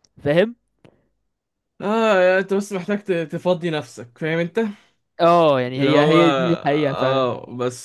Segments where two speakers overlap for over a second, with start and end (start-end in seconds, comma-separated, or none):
5.7-7.3